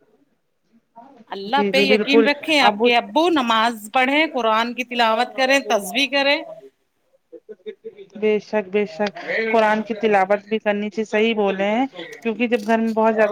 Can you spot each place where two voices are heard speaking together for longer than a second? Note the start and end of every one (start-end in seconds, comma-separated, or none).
none